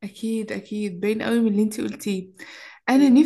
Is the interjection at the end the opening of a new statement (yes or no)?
no